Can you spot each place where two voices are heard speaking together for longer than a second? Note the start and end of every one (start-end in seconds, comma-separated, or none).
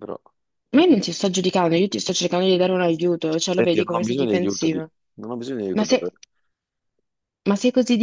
3.5-4.9